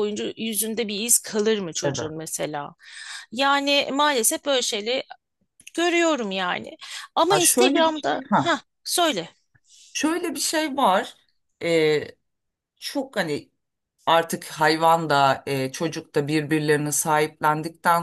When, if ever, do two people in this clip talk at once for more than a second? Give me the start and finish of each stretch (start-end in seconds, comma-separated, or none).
7.3-8.6